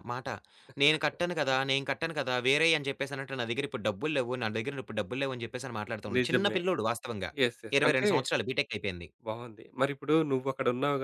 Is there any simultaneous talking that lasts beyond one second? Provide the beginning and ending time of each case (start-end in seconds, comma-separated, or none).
none